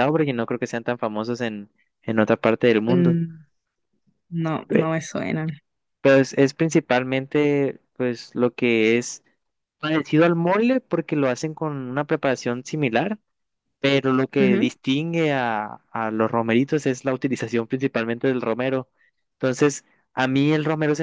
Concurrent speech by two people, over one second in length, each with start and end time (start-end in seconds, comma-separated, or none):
none